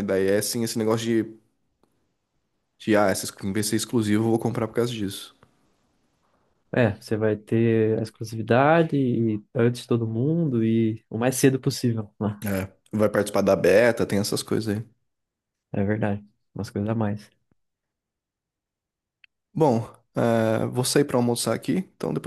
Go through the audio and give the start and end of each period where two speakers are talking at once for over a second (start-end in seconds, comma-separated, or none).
none